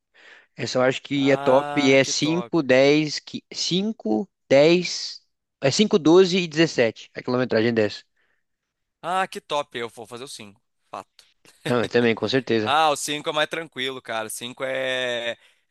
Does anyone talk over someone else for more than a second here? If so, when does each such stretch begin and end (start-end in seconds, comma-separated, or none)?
1.1-2.5